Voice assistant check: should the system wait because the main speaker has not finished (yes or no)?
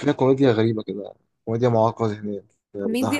no